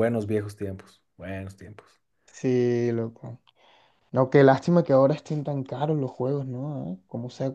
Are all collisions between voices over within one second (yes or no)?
yes